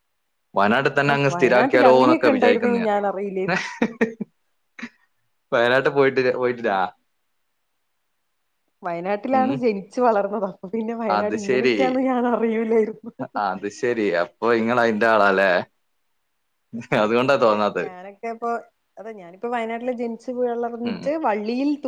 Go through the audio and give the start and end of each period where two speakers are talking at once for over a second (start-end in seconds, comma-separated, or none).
1.4-2.9